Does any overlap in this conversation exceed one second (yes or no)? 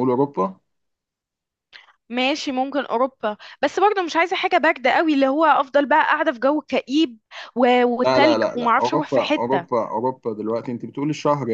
yes